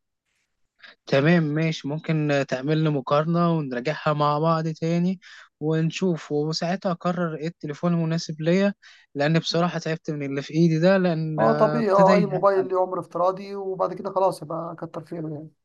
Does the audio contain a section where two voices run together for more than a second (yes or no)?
yes